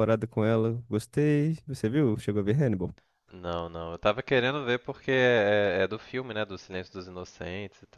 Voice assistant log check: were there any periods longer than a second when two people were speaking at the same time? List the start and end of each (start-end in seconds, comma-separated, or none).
none